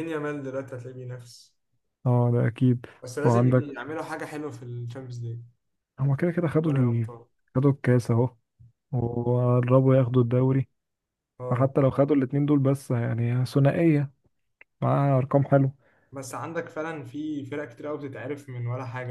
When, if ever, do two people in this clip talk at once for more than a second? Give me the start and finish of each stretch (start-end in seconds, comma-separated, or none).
none